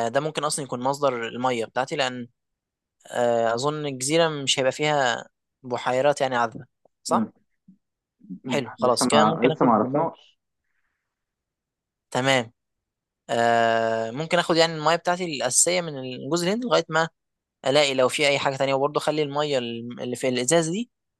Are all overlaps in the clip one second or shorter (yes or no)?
no